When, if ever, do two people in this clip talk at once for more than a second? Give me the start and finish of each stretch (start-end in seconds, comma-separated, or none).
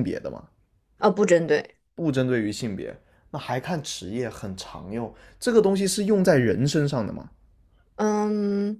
none